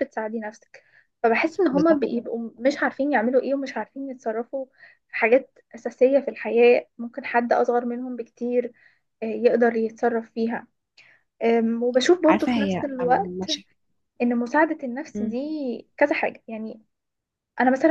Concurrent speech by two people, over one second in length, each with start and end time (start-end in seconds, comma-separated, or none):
12.2-13.5